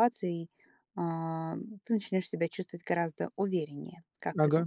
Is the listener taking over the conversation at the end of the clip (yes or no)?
yes